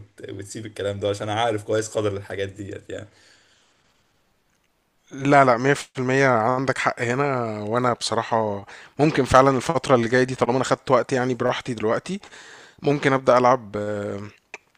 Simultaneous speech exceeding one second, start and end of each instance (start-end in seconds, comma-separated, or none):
none